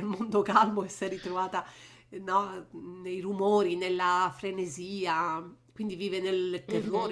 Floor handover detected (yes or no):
yes